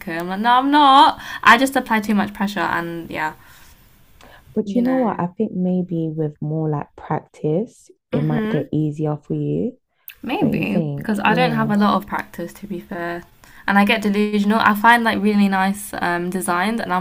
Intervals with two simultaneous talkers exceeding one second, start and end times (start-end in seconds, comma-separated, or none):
10.4-11.7